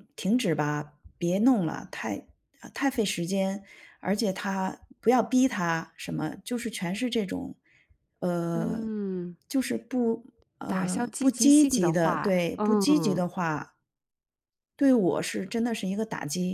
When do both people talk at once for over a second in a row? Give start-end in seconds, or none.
10.7-13.3